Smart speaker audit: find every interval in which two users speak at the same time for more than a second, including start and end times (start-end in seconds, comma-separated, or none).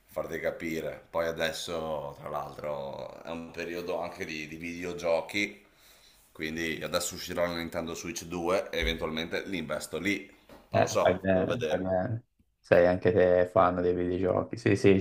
10.7-11.9